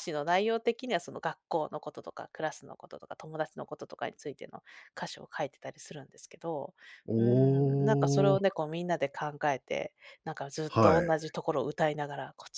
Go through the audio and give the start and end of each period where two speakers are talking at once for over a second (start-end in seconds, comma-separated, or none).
7.2-8.4